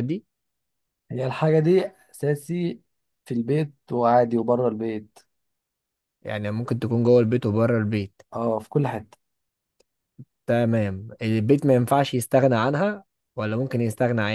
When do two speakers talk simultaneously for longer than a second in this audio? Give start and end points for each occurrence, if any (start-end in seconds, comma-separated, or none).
none